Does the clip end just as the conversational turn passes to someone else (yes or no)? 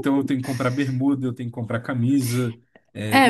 yes